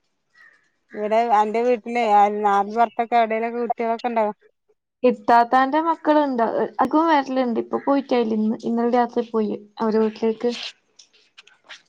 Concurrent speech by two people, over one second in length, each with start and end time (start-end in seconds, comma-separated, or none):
none